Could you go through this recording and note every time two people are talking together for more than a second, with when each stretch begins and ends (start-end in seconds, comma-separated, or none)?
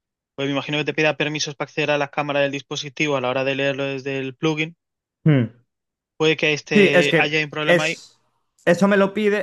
6.7-8.1